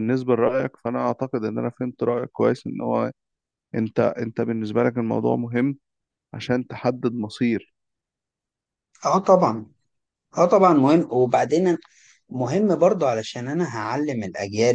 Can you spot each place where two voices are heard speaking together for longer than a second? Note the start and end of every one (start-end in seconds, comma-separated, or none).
none